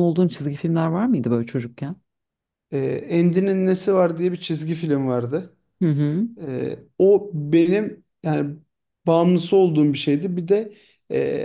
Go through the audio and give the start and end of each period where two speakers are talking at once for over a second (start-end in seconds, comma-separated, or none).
none